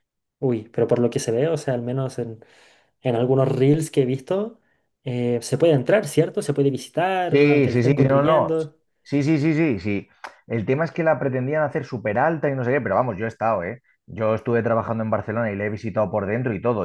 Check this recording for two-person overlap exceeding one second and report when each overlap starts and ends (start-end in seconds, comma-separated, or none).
7.3-8.5